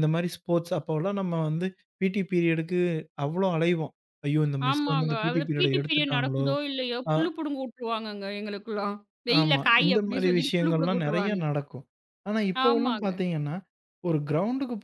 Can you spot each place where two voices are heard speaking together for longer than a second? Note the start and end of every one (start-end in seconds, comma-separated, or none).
4.7-6.5, 9.4-11.4